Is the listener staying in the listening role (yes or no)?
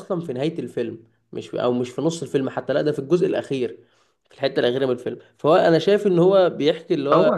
yes